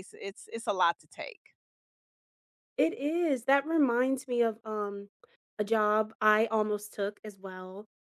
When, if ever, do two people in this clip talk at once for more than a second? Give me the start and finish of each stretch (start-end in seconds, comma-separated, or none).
none